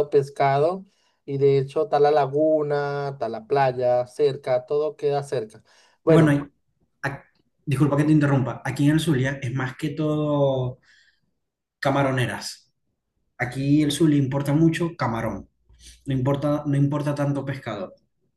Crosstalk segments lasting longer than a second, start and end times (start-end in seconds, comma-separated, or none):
none